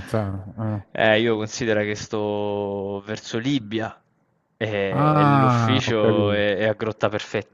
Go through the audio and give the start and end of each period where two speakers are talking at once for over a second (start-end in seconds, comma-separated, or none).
4.9-6.5